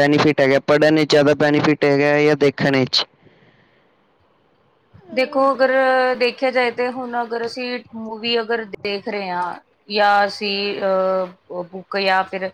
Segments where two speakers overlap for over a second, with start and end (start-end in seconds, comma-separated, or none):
none